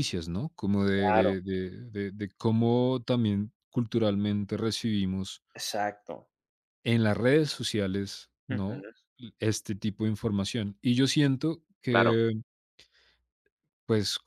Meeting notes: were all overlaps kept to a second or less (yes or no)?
yes